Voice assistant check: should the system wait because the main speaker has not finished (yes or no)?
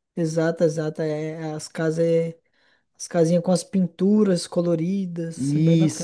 no